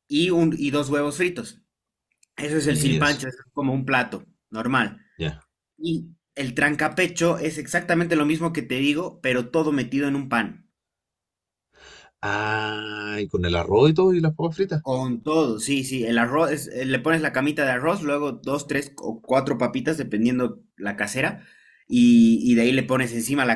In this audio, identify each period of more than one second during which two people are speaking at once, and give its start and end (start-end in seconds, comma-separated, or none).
none